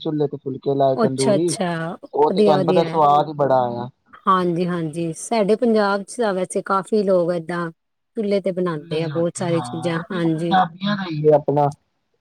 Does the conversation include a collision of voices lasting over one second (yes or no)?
yes